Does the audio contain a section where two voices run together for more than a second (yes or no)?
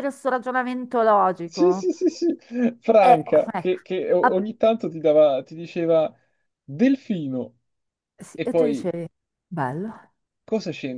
no